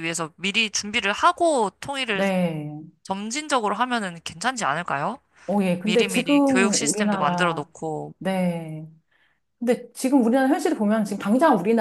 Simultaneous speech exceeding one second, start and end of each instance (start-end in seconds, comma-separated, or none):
5.8-7.7